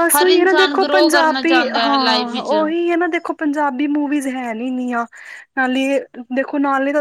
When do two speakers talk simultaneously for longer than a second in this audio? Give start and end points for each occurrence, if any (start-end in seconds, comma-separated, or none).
0.8-2.5